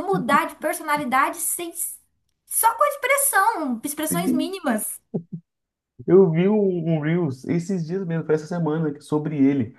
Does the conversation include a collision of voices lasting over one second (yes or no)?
no